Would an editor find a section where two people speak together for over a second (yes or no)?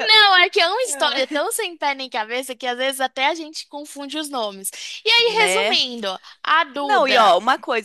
no